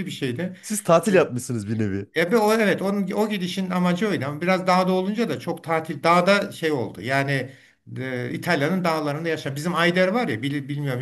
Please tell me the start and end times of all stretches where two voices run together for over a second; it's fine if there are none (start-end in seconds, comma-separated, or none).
none